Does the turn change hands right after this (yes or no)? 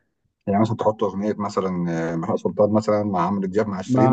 yes